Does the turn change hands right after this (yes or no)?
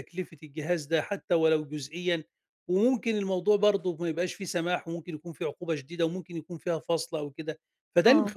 no